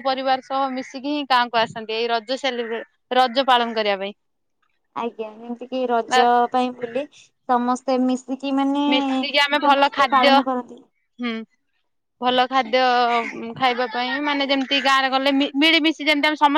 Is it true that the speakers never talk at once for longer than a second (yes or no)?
yes